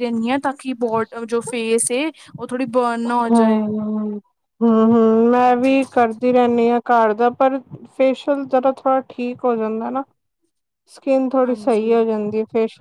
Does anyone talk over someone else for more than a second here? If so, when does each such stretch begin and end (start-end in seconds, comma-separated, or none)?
none